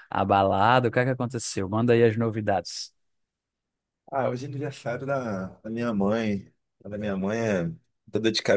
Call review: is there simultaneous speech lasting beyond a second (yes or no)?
no